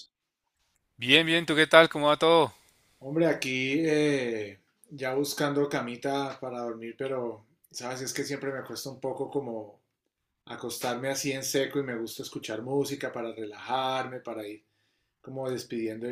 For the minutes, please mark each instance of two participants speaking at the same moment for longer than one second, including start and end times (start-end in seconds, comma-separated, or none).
none